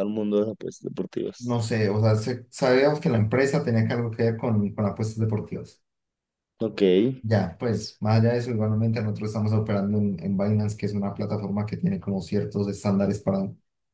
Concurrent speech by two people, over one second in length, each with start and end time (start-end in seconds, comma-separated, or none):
none